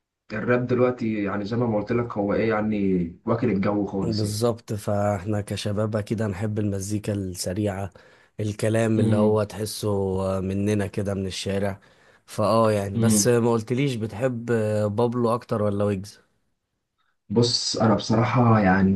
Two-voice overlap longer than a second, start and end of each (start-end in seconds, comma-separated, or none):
none